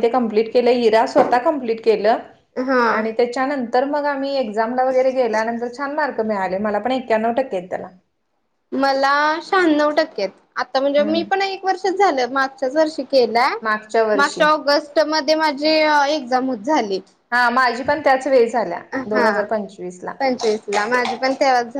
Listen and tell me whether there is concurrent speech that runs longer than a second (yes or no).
no